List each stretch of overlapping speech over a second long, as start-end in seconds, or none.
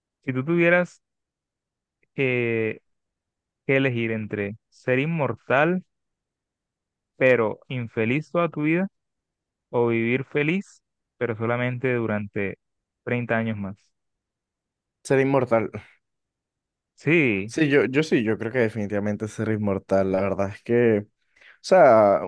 none